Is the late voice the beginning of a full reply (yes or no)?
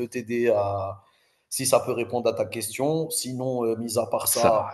no